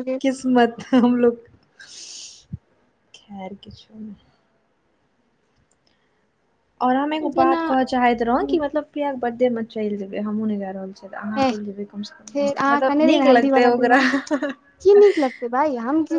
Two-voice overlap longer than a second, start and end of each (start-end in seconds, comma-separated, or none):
12.3-14.0